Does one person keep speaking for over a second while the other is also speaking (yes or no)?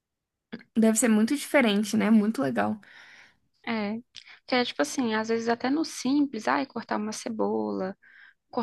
no